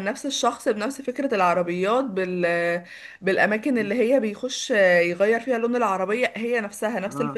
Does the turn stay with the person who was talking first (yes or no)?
yes